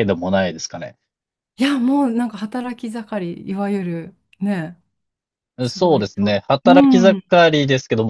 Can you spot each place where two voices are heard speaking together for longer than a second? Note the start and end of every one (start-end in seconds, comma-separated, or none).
5.7-7.2